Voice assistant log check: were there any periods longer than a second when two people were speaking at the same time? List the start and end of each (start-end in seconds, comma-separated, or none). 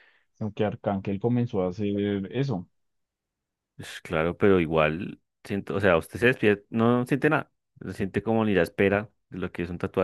none